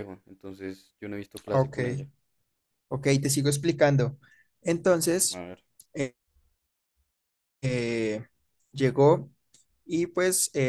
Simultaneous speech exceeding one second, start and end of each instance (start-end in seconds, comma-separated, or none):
none